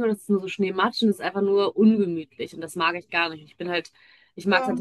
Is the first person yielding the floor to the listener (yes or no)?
no